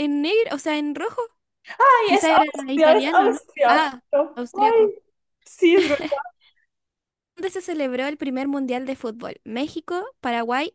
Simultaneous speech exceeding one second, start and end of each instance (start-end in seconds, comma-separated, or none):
2.0-4.9